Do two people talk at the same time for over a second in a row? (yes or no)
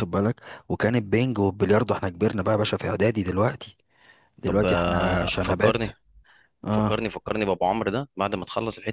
yes